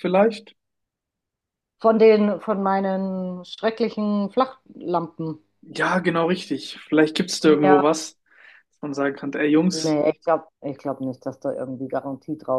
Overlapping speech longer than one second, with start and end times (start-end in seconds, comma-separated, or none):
none